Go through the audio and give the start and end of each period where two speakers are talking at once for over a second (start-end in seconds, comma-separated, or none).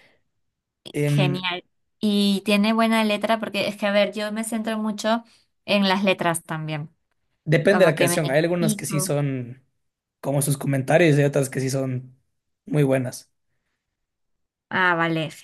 7.7-9.1